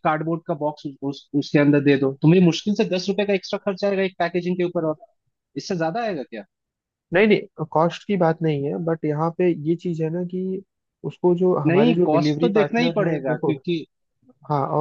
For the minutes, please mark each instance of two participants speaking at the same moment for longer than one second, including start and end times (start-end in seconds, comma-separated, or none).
11.7-13.5